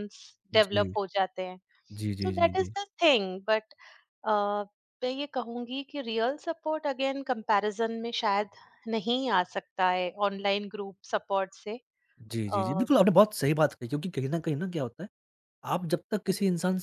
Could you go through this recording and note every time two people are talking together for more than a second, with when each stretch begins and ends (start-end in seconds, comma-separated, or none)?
none